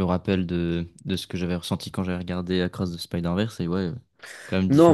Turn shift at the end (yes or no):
yes